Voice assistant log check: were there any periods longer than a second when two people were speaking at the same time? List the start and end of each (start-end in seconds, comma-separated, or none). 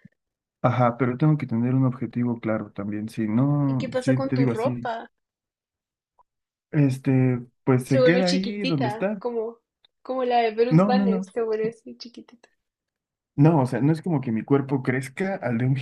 3.7-4.9, 7.8-9.2